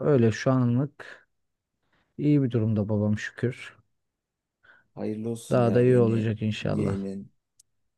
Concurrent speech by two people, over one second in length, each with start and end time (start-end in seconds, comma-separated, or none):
5.5-7.0